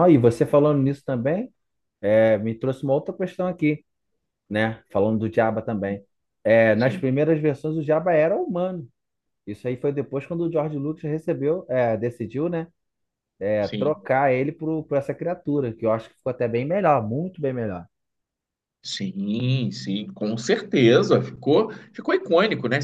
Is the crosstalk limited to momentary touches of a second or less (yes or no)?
yes